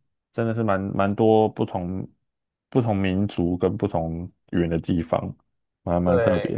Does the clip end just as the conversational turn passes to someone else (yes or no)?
yes